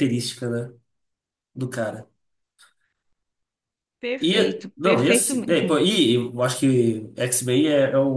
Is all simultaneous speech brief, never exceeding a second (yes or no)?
no